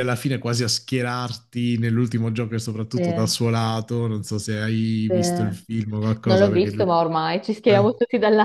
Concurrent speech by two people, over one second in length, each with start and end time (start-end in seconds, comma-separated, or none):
5.1-6.9